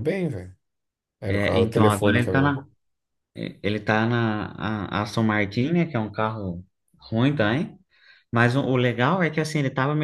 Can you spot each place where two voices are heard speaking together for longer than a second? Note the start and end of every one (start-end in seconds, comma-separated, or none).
1.3-2.6